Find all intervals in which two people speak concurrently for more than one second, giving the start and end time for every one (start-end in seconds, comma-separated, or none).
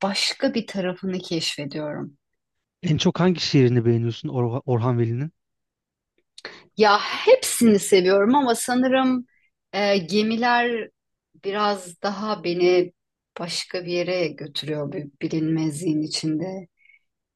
none